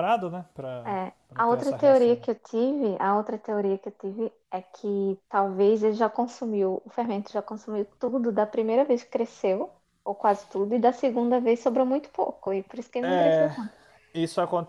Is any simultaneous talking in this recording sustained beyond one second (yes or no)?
yes